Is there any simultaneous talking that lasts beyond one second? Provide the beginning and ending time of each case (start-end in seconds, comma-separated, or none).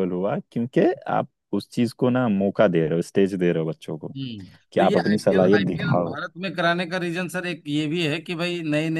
4.7-6.2